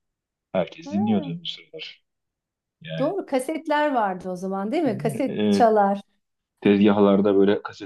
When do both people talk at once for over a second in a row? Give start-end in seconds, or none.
none